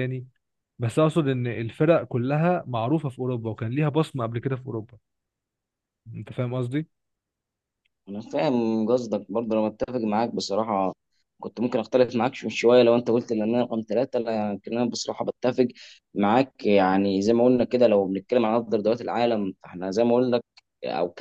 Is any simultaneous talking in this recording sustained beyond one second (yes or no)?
no